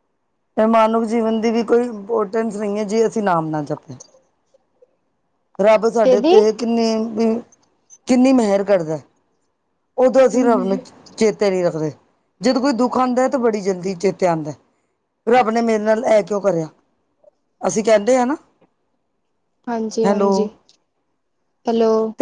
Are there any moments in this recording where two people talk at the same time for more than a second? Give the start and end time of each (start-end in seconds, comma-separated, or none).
none